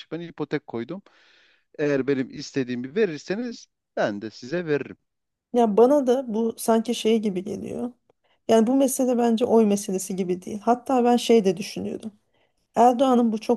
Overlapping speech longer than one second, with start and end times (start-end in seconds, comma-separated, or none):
none